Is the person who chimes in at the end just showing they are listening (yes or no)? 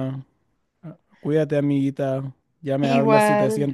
yes